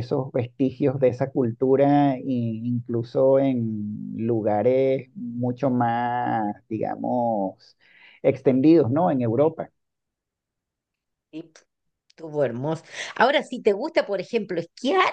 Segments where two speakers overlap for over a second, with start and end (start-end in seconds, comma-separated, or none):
none